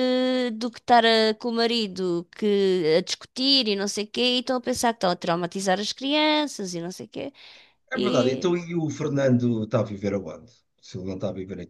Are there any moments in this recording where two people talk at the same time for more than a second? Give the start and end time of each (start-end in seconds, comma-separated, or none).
none